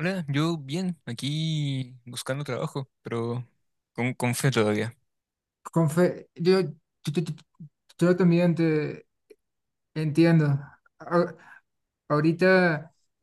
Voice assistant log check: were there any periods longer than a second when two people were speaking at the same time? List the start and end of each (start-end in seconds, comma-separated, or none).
none